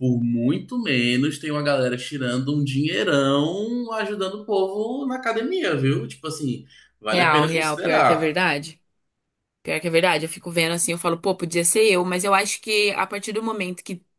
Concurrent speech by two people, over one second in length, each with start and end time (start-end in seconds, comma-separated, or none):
7.1-8.3